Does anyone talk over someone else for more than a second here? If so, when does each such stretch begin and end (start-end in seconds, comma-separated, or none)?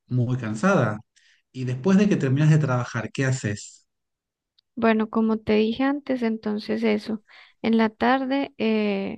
none